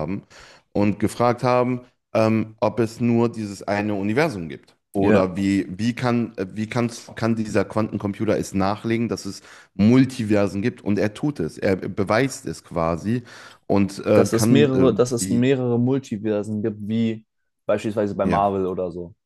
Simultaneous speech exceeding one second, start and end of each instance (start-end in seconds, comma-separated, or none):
14.1-15.5